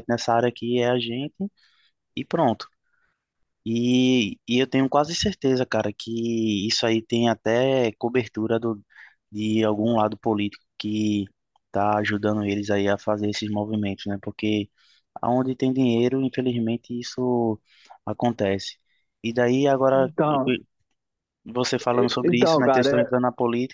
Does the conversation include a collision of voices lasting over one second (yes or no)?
yes